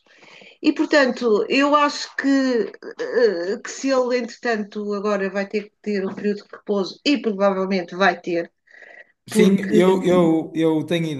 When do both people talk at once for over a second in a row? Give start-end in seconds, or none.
none